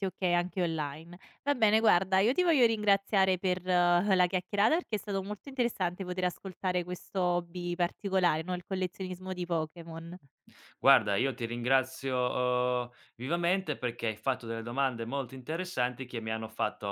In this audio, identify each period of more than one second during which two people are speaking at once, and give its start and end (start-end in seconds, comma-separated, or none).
none